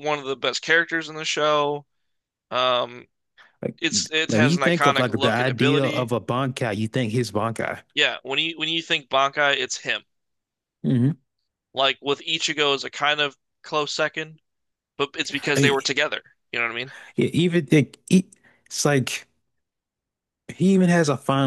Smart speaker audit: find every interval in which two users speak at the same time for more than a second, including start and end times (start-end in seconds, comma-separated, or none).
3.8-6.1